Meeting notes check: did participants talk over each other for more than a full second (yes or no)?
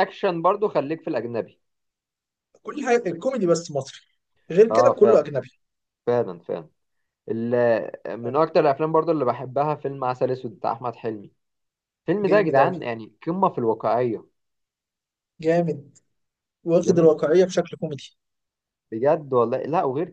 no